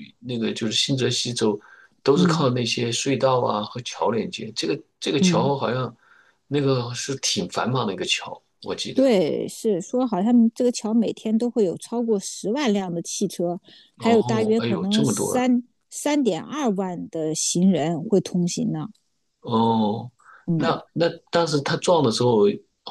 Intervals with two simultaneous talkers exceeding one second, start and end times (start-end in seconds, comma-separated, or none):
14.0-15.4